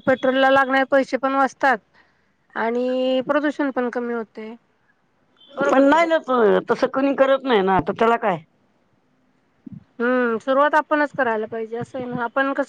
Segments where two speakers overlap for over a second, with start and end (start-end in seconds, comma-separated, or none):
none